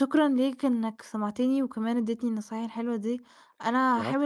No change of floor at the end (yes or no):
yes